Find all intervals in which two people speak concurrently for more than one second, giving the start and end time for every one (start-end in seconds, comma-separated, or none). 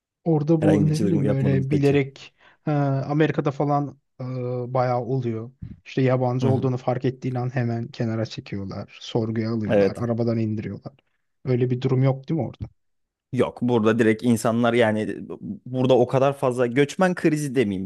0.6-2.0